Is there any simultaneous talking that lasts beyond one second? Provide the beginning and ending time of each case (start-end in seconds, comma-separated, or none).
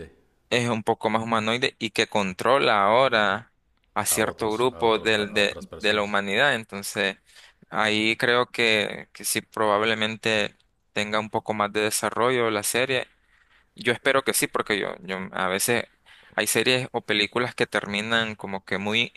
4.0-6.2